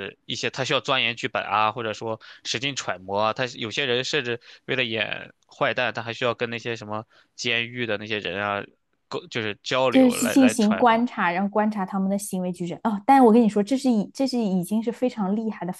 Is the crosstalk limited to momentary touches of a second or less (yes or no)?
no